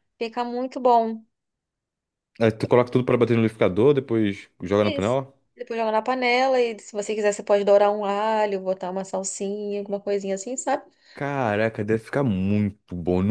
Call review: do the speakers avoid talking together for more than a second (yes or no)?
yes